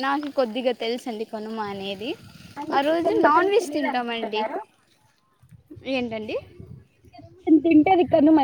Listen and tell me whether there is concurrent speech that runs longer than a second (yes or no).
yes